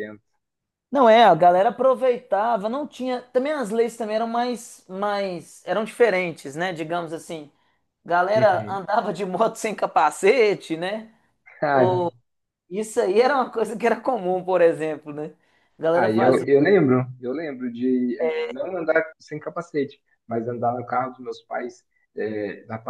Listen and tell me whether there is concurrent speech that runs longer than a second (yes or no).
no